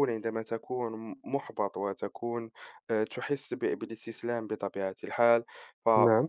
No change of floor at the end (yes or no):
yes